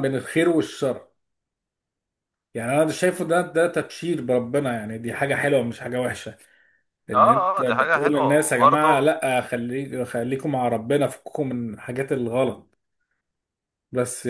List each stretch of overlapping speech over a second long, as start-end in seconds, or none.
7.1-9.1